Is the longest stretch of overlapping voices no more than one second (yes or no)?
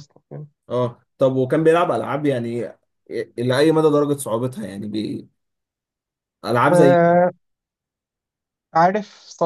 yes